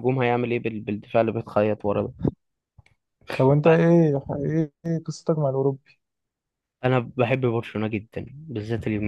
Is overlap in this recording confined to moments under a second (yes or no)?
yes